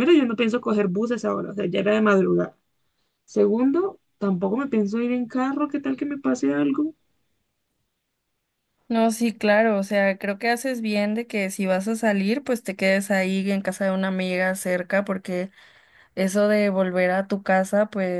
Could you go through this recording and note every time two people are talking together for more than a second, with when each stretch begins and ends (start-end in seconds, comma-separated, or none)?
none